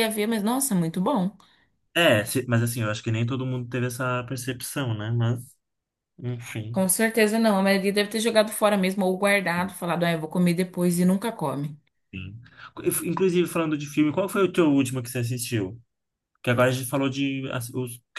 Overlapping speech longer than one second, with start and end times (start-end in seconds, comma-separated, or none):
none